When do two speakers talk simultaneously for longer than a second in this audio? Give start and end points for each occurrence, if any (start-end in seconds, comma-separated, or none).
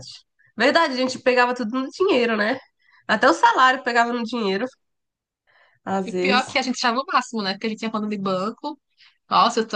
none